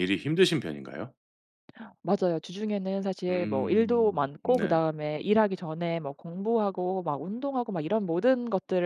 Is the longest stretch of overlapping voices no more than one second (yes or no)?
no